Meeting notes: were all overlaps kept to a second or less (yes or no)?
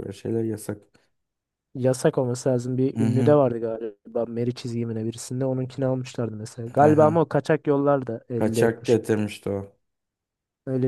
yes